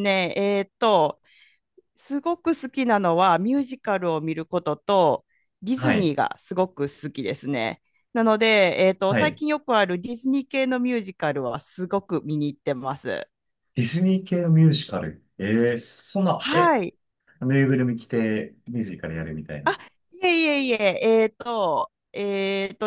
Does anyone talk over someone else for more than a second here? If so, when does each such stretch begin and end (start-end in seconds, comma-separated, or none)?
none